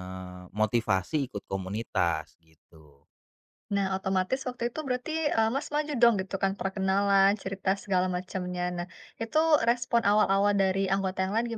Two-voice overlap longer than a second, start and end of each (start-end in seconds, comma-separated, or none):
none